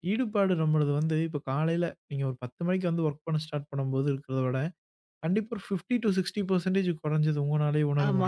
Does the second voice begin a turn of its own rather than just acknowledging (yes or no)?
yes